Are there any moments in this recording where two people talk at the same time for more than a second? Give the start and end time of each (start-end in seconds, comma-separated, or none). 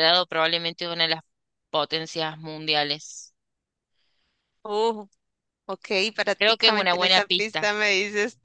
6.4-7.7